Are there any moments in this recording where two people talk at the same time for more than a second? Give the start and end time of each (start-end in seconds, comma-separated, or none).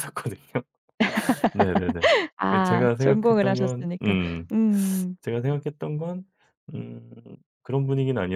2.5-4.2